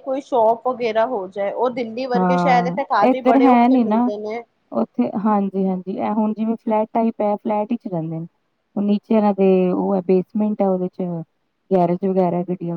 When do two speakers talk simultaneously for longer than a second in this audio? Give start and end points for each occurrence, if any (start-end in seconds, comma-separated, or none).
2.1-4.1